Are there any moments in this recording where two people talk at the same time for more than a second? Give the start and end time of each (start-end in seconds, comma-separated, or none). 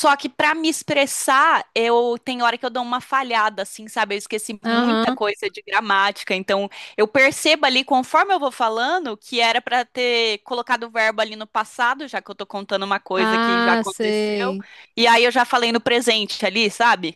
13.2-14.6